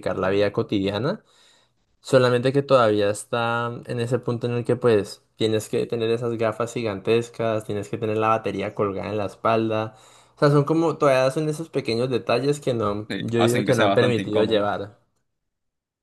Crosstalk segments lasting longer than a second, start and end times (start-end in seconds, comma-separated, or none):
13.1-14.7